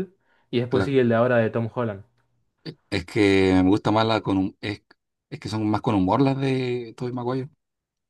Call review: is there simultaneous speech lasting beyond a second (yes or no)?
no